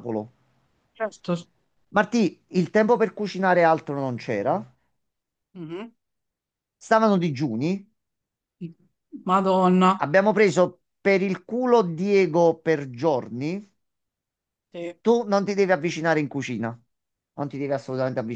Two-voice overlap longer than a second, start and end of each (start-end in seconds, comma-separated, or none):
none